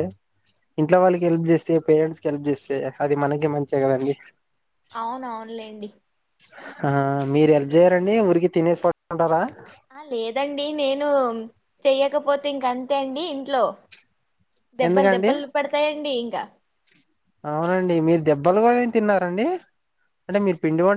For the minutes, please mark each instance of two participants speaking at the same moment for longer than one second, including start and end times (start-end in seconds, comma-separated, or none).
none